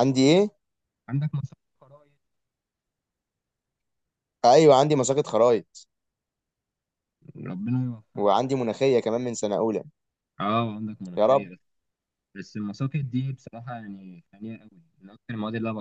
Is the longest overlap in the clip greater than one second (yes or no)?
no